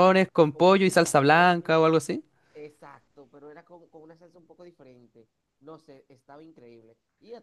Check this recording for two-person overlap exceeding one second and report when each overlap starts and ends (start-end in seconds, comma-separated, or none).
0.5-1.8